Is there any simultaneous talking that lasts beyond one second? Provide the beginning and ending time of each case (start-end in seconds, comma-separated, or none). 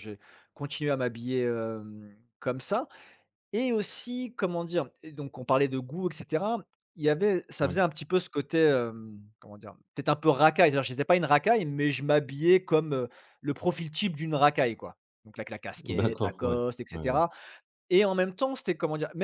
15.8-17.2